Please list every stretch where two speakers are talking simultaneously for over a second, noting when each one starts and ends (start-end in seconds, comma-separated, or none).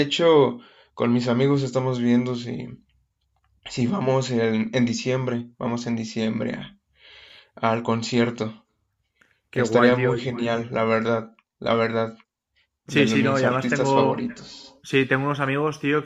12.9-14.4